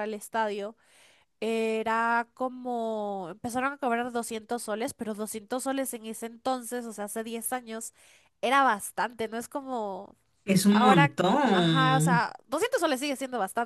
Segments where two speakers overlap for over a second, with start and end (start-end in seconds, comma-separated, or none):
10.7-12.3